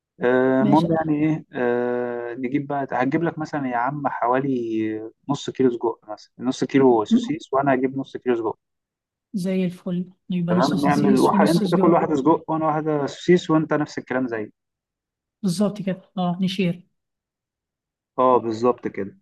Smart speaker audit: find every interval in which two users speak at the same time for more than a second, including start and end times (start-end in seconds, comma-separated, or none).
10.5-12.0